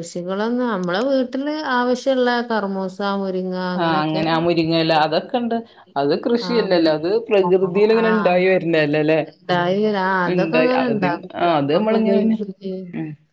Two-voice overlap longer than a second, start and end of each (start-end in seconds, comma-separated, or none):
10.4-12.4